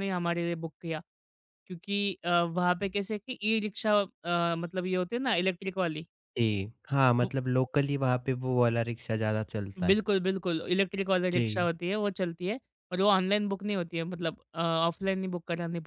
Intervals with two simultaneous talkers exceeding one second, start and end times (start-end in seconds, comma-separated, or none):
none